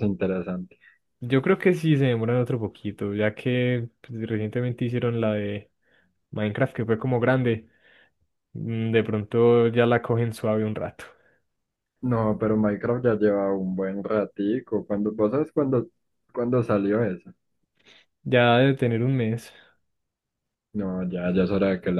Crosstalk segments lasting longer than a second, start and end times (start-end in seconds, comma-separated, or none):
none